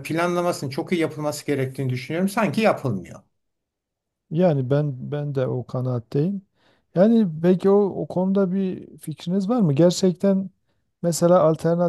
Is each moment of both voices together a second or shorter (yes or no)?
yes